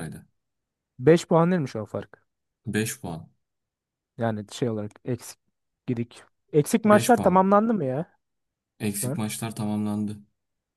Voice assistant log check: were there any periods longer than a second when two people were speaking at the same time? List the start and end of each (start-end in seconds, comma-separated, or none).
none